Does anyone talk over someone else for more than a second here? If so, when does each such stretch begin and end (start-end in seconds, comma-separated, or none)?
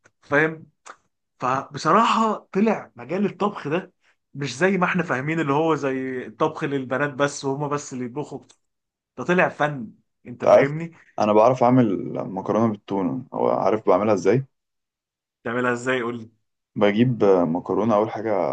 none